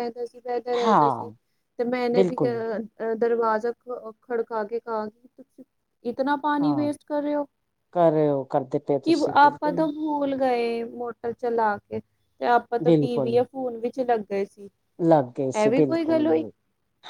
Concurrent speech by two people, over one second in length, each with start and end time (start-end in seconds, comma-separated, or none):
none